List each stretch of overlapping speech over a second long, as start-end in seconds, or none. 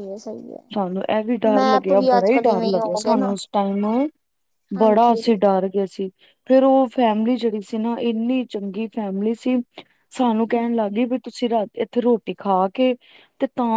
1.6-3.3